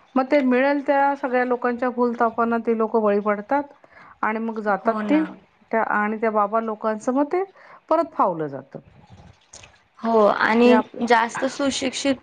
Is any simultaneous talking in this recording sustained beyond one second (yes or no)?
no